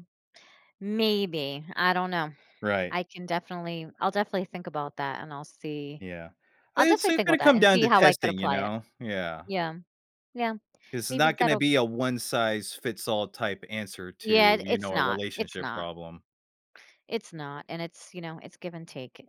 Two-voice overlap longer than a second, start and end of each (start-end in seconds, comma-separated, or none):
6.8-8.7, 14.2-15.9